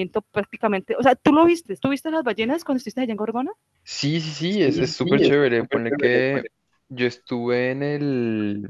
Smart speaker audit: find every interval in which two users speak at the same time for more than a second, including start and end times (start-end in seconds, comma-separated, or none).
4.5-6.2